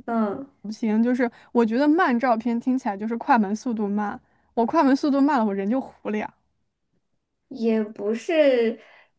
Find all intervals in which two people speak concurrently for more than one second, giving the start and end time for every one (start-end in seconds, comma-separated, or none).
none